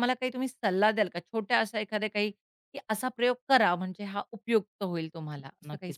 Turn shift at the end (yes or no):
yes